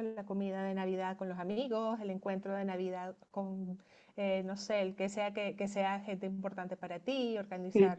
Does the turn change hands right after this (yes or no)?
yes